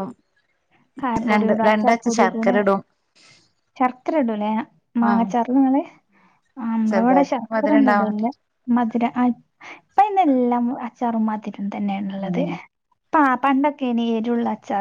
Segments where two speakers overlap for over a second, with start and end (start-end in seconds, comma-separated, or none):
6.9-8.3